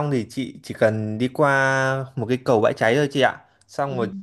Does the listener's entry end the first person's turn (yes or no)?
no